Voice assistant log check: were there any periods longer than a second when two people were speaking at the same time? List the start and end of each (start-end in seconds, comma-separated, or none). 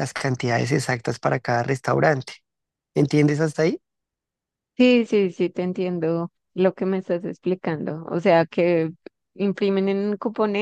none